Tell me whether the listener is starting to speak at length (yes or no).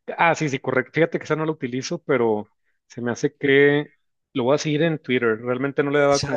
no